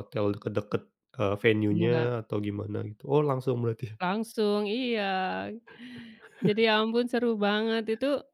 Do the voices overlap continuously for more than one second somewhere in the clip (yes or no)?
no